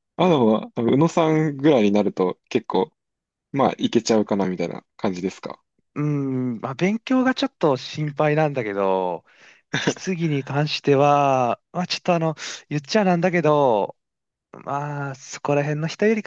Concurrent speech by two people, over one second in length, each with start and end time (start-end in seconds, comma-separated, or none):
none